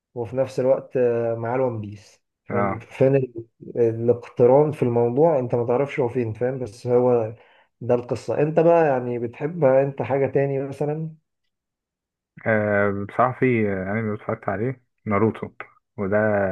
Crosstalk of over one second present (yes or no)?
no